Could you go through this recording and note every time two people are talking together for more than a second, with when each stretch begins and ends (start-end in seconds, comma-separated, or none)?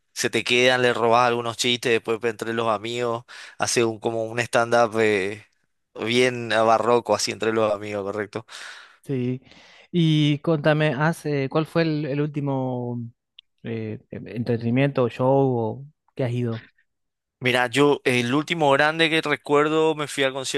none